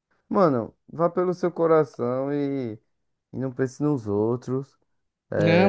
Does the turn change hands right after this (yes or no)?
yes